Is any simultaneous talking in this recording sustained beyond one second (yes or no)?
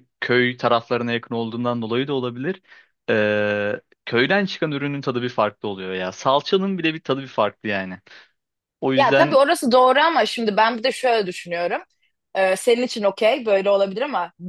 no